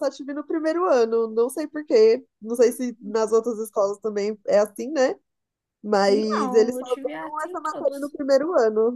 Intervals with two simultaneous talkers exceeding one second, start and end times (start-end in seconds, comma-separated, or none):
6.1-8.1